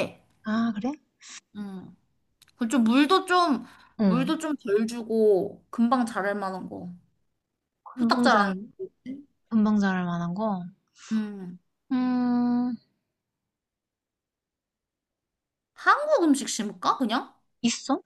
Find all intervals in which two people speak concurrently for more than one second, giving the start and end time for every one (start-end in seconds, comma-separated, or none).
none